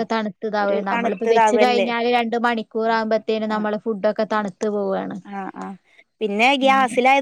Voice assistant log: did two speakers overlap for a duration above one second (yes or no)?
yes